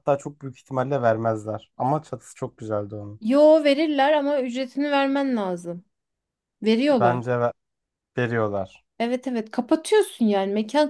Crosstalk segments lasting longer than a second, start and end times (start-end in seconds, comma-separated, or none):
none